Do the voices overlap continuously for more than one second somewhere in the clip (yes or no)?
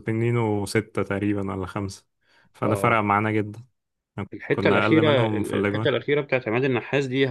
yes